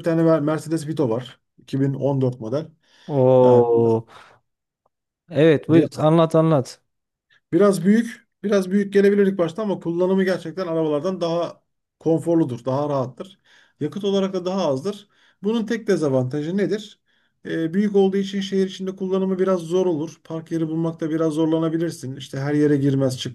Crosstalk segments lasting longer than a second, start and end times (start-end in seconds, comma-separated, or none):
none